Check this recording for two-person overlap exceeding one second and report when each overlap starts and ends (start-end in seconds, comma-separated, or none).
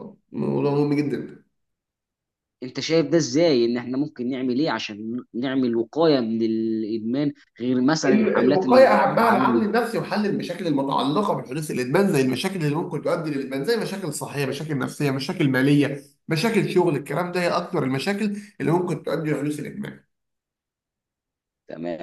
8.1-9.6